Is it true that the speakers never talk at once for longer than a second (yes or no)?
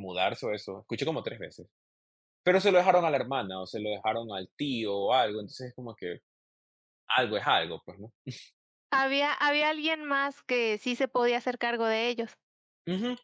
yes